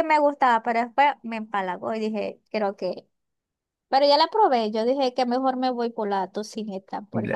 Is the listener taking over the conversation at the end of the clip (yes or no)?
yes